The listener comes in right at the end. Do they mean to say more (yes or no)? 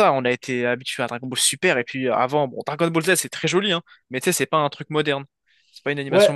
yes